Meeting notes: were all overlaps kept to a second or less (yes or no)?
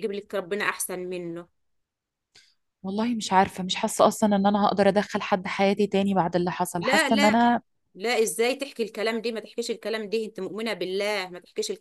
yes